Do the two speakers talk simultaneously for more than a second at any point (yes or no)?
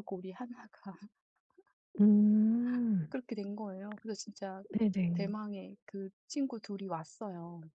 no